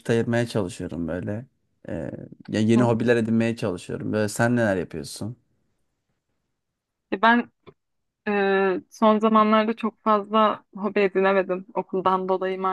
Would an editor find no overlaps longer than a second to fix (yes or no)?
yes